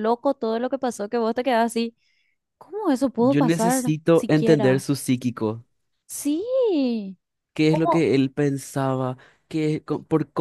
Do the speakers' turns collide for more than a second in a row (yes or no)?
yes